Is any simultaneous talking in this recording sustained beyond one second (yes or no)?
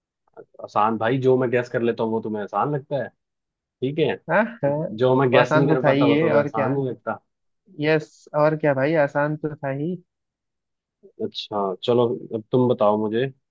yes